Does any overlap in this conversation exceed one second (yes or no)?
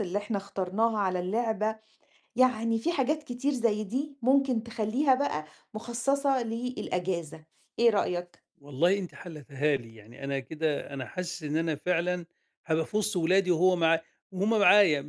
no